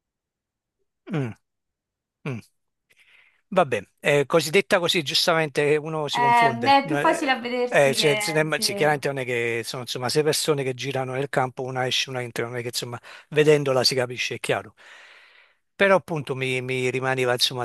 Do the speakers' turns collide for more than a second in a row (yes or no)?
yes